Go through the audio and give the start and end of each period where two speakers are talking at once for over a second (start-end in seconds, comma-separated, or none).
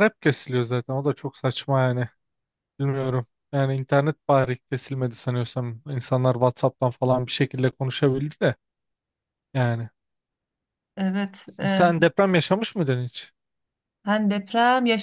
none